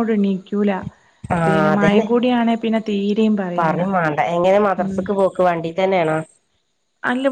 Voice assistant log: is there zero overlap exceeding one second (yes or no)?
yes